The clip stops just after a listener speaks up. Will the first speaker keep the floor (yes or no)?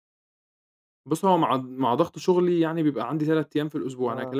yes